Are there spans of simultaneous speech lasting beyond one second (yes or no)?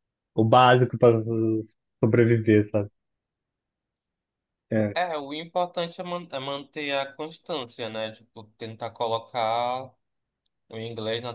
no